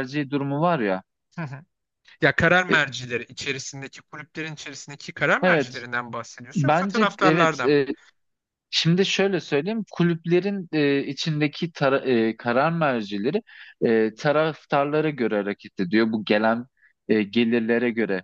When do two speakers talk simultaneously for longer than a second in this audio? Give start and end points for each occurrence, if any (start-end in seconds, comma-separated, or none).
6.5-7.8